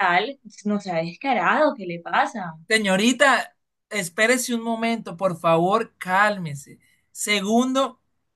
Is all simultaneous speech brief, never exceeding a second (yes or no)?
yes